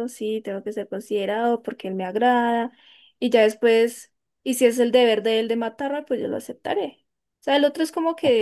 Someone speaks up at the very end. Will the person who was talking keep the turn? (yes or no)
no